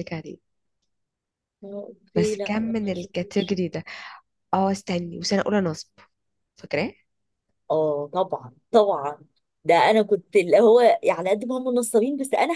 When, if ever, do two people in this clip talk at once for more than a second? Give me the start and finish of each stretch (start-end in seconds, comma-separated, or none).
2.2-3.6